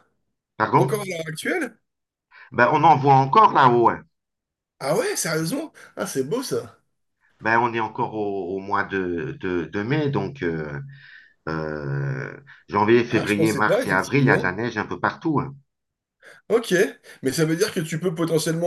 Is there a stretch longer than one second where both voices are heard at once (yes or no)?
yes